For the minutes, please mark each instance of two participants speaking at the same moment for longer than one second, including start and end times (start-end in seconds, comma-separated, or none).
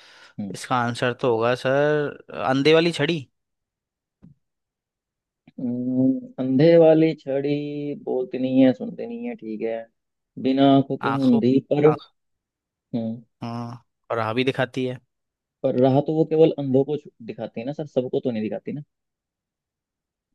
none